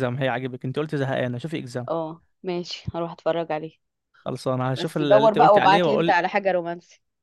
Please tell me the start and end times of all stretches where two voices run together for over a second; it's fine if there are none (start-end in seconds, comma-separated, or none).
4.8-6.2